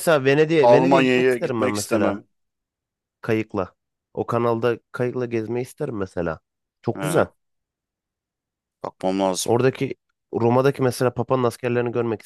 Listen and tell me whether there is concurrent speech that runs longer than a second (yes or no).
yes